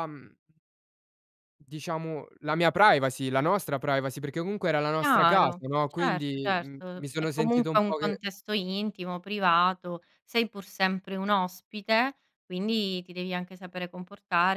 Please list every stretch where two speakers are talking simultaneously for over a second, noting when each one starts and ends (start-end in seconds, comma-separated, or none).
5.0-8.2